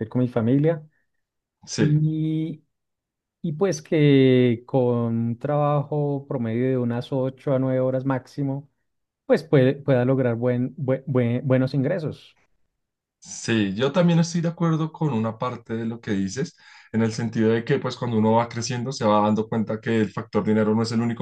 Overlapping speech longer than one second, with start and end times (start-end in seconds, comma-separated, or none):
none